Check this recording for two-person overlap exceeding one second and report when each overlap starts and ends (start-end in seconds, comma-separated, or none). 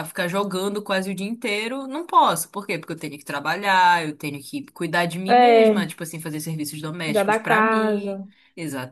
7.0-8.3